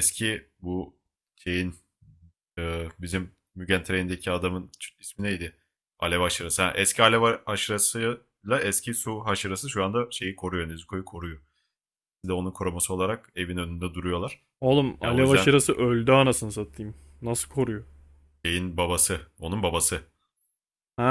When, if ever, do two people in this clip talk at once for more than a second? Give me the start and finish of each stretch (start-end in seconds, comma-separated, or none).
none